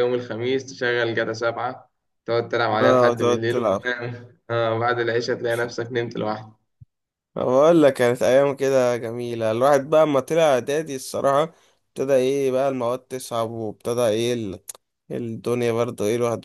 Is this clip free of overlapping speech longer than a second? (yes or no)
no